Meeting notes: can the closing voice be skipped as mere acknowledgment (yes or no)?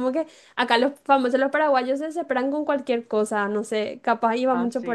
no